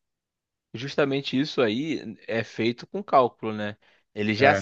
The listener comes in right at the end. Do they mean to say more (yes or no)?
no